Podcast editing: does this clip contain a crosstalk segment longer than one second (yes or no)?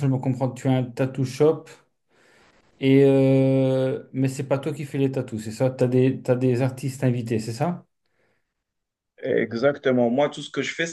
no